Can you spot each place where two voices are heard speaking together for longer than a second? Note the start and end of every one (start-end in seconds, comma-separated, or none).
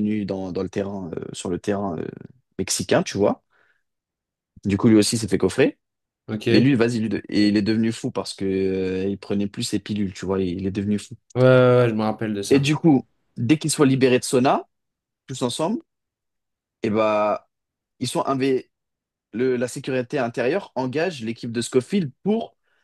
none